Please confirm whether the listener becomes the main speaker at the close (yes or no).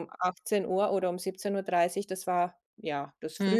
yes